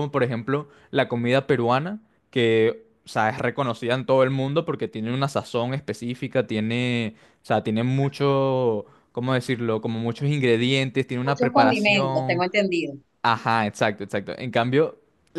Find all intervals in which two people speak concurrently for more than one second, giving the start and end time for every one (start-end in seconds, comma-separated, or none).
11.2-12.4